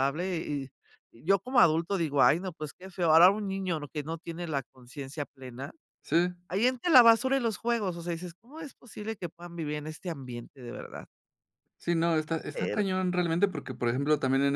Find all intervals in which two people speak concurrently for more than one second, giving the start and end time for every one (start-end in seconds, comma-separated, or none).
none